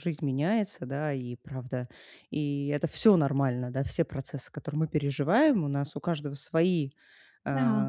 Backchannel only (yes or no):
yes